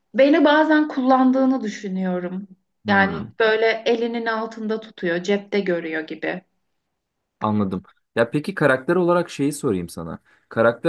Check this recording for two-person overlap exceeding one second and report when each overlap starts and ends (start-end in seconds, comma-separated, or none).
none